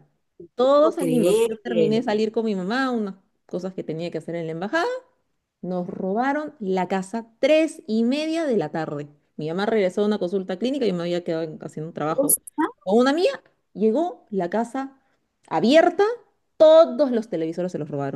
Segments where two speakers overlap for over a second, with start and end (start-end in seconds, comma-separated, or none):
0.8-2.0